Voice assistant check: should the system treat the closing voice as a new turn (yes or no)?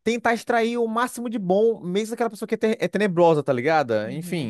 yes